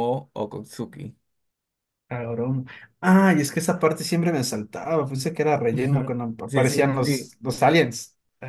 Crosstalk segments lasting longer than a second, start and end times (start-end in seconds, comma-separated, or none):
5.7-7.3